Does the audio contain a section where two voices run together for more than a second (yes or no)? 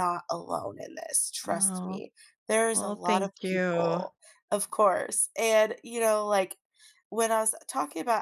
yes